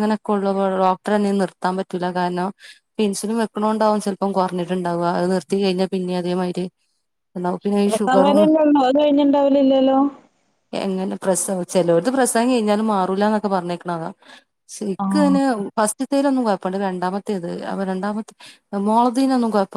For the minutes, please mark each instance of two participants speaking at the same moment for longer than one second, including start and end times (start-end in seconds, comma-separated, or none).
none